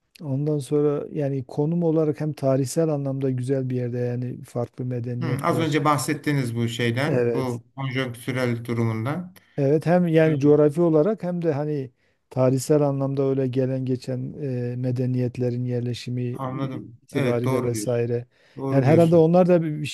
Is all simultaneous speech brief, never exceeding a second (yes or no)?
no